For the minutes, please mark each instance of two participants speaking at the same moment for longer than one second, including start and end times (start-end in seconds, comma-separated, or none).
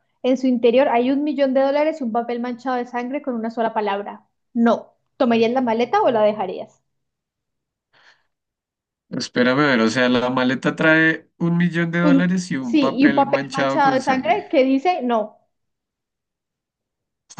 12.0-14.4